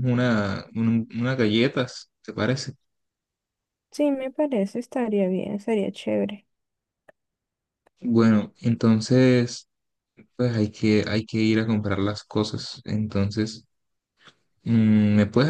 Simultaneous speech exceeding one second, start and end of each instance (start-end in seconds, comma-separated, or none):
none